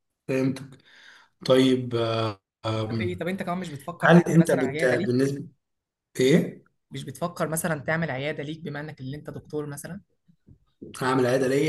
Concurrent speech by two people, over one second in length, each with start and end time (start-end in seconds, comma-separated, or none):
4.0-5.3